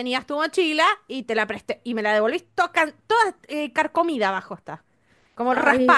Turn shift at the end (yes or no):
yes